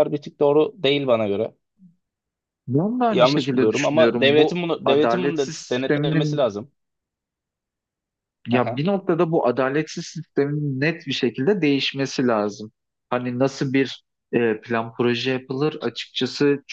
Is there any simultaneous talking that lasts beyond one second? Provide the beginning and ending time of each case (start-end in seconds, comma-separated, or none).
3.1-6.5